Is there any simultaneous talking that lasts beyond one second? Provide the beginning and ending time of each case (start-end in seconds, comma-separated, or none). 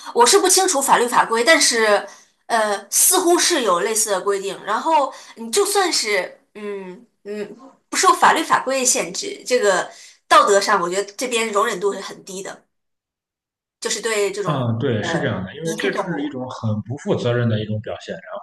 14.4-16.4